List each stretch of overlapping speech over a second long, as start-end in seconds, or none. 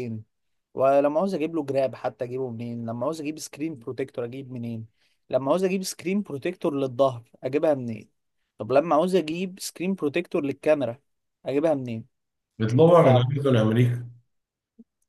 none